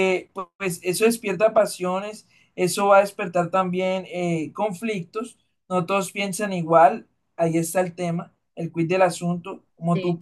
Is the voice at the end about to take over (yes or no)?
no